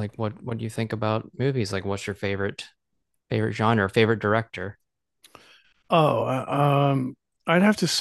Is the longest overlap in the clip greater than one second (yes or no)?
no